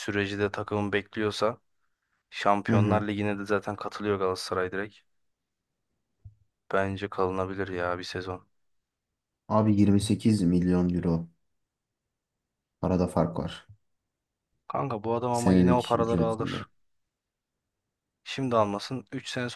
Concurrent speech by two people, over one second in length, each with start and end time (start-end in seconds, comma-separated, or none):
15.3-16.6